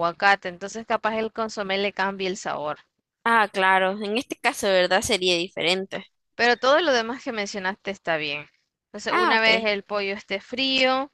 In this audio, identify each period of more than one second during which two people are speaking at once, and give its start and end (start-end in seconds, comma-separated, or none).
none